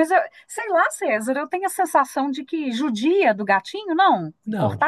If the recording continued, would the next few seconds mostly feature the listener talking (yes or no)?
yes